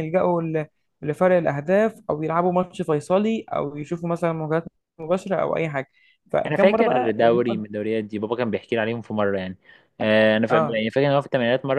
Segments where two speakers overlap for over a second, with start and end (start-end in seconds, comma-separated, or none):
6.5-7.7